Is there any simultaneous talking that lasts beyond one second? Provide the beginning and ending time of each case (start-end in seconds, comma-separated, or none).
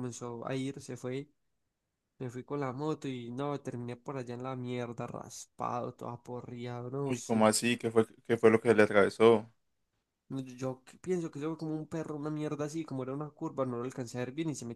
none